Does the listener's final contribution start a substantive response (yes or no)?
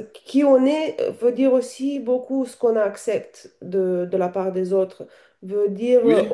no